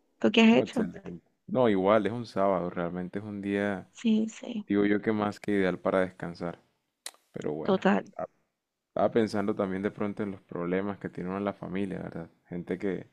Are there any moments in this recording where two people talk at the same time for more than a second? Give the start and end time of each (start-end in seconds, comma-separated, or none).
none